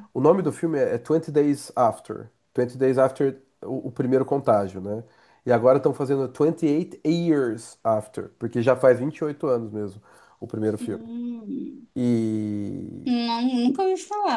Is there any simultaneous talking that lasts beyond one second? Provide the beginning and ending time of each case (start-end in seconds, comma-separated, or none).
none